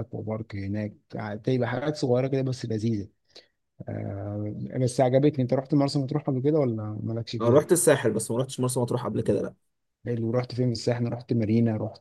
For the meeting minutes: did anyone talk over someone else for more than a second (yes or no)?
no